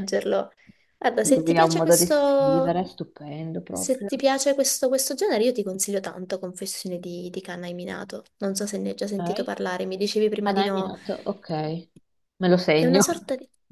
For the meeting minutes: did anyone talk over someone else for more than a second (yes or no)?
yes